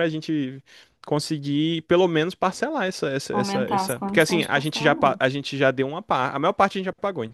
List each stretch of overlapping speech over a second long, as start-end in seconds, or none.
3.3-5.2